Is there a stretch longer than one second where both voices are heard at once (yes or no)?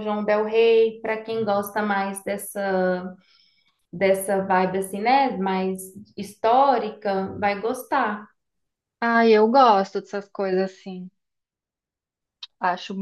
no